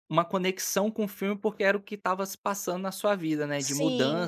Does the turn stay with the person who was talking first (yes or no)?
no